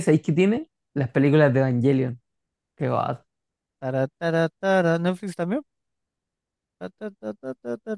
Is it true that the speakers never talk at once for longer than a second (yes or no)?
yes